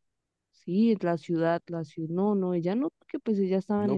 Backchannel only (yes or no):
no